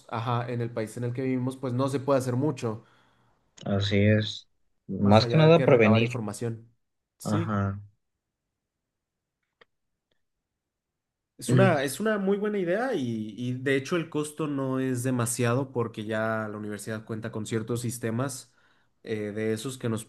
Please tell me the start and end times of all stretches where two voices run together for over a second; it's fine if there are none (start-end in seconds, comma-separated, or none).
5.0-6.2